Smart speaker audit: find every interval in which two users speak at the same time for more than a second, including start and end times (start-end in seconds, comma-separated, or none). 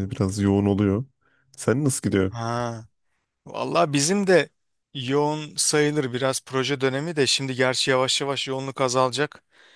none